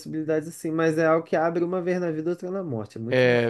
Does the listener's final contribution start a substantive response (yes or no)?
yes